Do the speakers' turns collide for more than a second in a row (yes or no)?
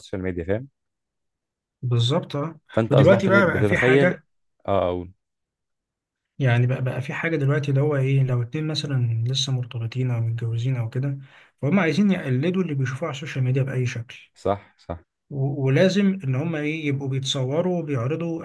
yes